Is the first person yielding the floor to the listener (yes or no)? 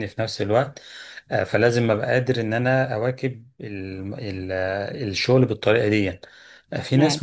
no